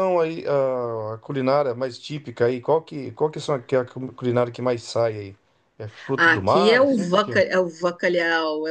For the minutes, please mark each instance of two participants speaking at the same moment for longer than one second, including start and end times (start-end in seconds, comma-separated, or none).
6.2-7.5